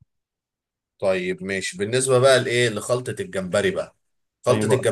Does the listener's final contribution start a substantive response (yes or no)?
no